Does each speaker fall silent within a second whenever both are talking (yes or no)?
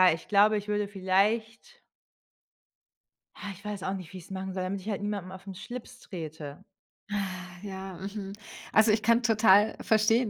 yes